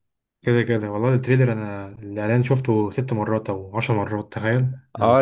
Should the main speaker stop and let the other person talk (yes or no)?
yes